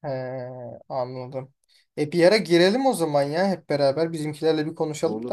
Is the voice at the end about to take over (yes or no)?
yes